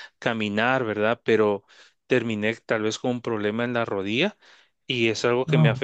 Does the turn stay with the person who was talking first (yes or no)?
yes